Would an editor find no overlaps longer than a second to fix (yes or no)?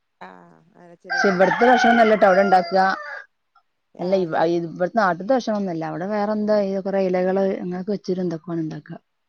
no